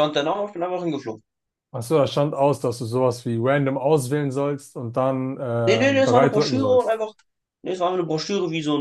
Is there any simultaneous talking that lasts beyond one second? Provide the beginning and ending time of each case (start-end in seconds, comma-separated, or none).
5.7-7.0